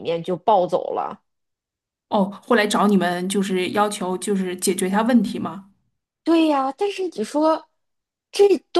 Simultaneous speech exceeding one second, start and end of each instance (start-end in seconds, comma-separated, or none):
none